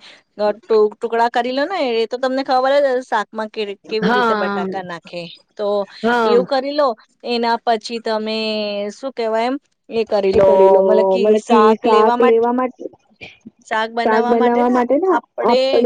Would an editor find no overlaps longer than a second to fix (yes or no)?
yes